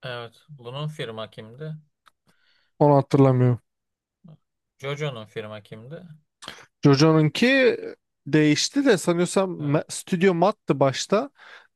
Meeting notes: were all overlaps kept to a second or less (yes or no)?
yes